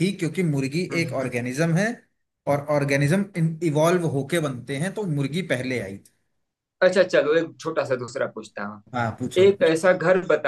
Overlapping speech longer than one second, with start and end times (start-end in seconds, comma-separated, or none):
none